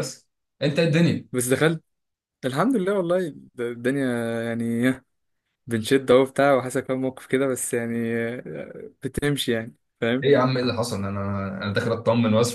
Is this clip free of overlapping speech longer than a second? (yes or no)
yes